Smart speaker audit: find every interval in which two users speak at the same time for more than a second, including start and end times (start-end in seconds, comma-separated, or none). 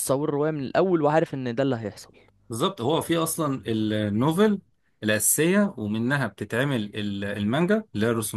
none